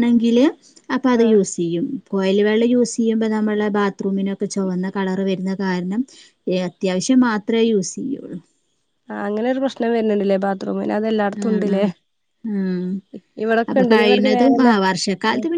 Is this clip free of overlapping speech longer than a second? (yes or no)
yes